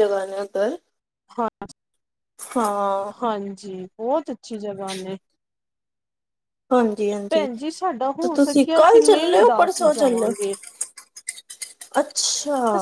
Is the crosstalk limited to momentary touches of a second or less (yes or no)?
no